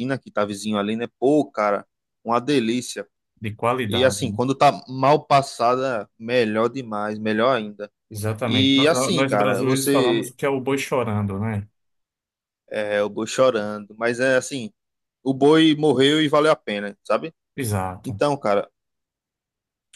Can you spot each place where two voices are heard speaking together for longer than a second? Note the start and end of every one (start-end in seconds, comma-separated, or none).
8.4-10.3